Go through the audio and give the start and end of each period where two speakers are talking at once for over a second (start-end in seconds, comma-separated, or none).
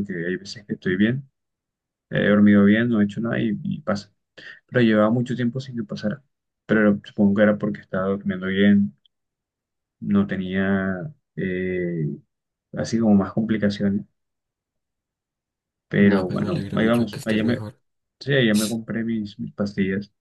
16.0-17.6